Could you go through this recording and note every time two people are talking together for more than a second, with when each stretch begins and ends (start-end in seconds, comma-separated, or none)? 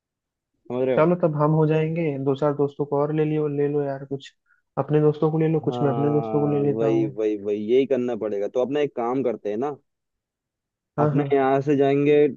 5.7-7.2